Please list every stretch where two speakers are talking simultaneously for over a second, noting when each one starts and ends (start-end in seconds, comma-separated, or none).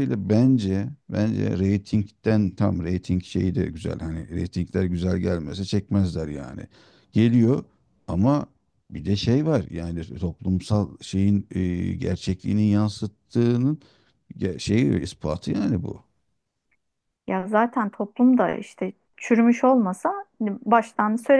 none